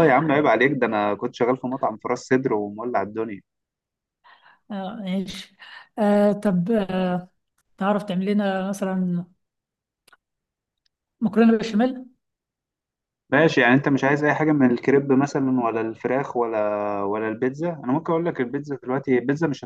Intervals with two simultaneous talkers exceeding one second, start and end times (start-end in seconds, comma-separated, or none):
none